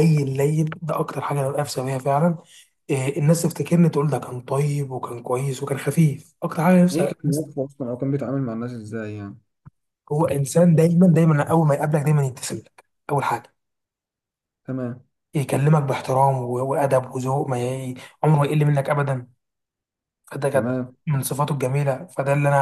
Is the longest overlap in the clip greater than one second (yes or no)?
no